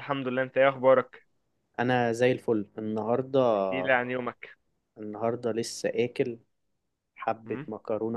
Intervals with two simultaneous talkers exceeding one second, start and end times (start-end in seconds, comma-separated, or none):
none